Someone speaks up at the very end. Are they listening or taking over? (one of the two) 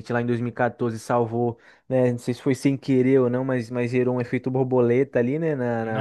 taking over